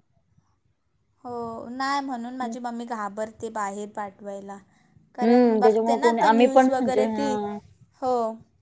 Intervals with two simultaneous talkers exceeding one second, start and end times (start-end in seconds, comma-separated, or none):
5.2-7.3